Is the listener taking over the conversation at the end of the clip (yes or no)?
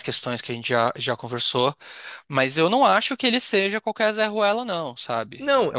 yes